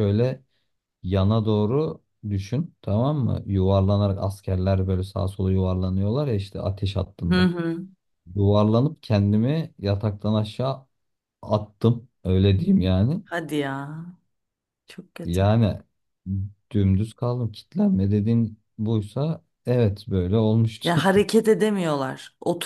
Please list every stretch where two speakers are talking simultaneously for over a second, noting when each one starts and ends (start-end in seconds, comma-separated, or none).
none